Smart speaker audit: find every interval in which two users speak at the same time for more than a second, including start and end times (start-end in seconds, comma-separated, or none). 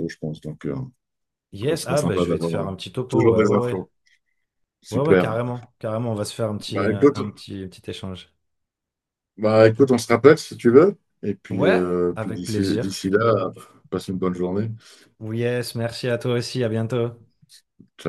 1.6-3.9, 11.5-13.0